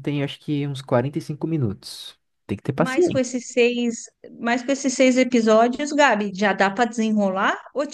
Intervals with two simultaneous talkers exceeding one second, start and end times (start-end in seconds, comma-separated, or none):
none